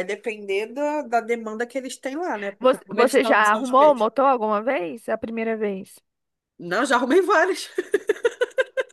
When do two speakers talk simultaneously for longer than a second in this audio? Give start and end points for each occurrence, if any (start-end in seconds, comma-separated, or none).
2.6-4.0